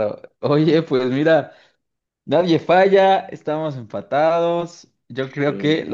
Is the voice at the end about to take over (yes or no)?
no